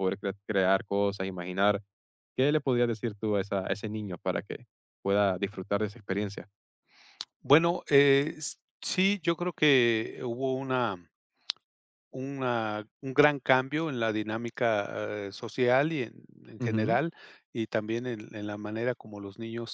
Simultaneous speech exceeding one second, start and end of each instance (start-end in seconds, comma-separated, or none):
none